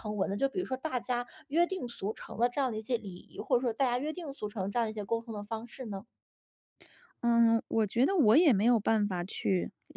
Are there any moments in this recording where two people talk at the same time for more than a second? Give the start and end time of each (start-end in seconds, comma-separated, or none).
none